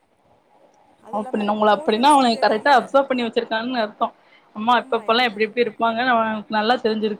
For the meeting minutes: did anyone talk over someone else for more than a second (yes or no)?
yes